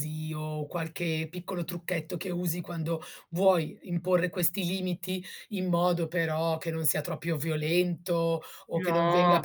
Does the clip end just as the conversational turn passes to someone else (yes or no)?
no